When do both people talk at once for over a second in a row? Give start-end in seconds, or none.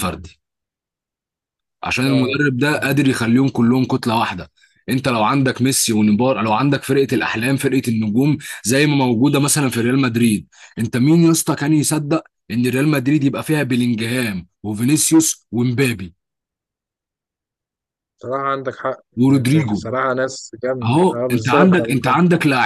20.8-22.2